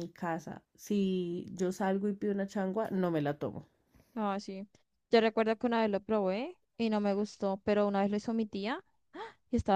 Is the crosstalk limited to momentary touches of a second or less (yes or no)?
yes